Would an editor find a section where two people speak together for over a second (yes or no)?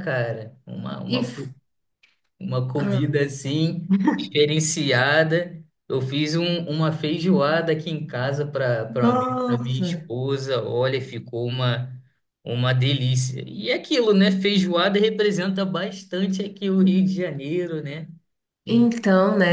yes